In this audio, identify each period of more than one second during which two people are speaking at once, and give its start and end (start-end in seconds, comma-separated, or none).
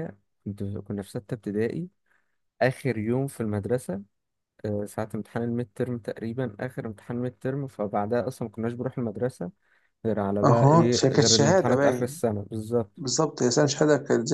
10.4-12.2